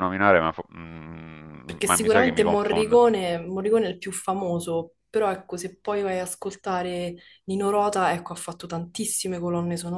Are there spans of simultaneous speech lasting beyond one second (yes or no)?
yes